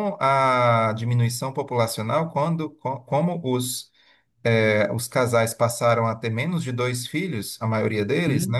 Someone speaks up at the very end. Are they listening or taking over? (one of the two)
listening